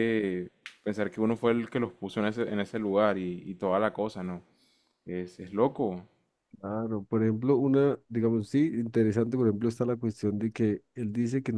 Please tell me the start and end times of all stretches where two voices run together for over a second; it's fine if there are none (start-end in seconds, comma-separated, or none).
none